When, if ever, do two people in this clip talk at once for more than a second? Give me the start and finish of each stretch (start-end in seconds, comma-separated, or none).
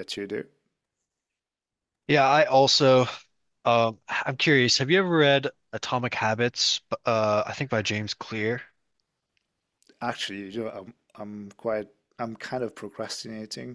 none